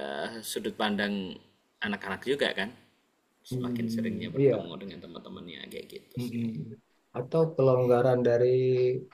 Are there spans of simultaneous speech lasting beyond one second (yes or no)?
yes